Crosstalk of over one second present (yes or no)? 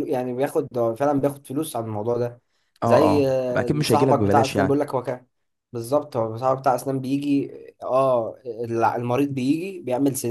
yes